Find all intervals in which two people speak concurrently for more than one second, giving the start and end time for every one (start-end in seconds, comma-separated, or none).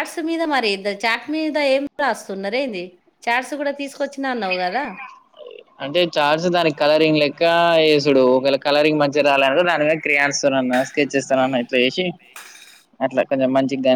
none